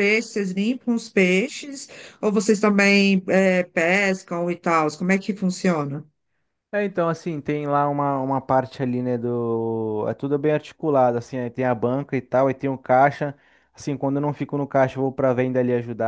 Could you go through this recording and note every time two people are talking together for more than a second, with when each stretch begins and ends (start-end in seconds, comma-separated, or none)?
none